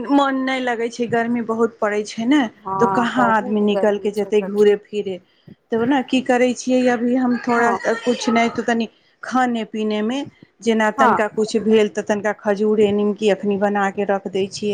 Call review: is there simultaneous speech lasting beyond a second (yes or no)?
yes